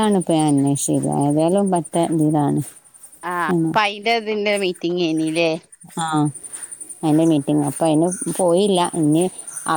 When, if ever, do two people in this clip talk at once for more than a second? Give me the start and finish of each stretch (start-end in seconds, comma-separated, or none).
none